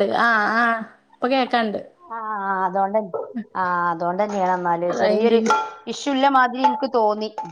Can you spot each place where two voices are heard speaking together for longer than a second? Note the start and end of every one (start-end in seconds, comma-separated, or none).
none